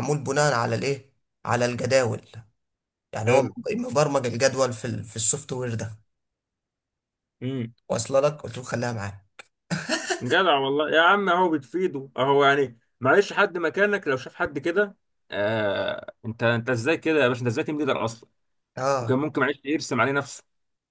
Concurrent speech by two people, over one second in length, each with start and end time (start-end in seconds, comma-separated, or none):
none